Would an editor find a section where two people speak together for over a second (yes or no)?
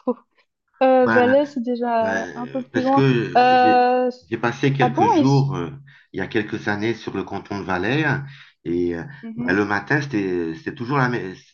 yes